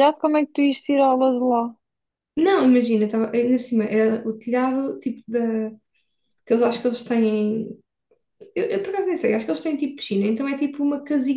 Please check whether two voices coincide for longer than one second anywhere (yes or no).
no